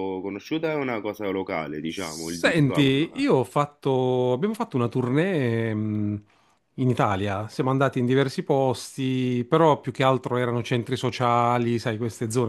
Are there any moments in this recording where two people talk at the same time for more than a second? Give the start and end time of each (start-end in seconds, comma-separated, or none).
2.0-3.3